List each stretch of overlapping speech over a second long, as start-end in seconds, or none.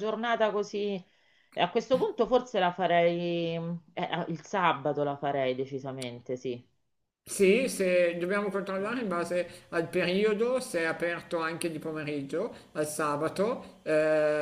none